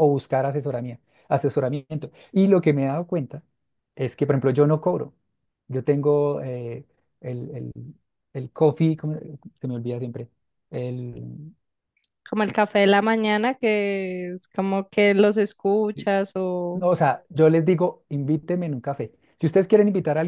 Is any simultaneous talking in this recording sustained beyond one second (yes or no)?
no